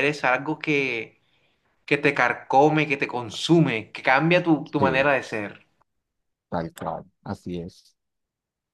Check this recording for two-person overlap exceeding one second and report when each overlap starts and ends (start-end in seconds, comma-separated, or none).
none